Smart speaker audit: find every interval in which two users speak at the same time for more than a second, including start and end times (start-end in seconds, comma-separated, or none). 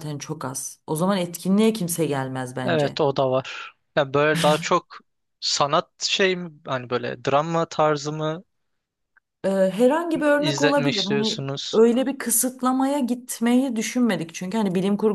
10.4-11.8